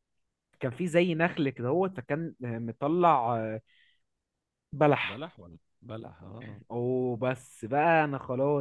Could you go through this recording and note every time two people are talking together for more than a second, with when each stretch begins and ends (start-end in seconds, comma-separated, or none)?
none